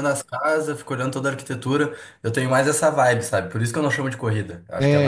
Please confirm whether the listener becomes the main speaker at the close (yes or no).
yes